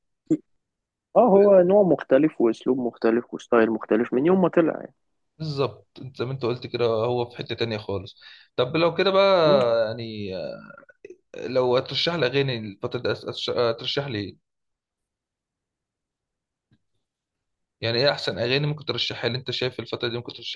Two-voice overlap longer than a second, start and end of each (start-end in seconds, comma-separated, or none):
none